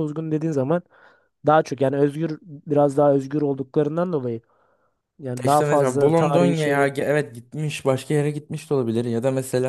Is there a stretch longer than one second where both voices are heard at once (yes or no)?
yes